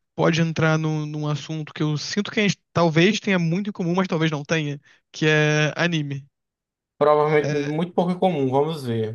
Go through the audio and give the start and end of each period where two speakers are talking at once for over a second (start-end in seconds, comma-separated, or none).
none